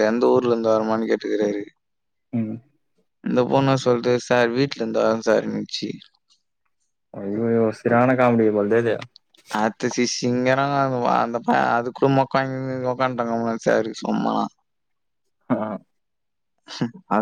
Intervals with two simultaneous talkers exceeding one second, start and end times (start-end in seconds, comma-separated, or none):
none